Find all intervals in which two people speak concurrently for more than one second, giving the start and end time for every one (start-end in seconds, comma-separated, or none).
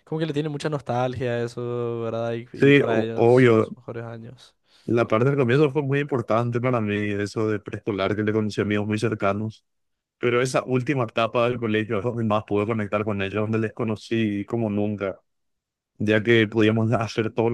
2.5-3.8